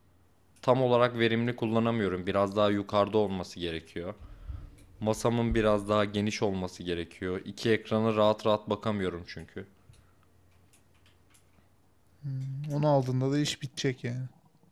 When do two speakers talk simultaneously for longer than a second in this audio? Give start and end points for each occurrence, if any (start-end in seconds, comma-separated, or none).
none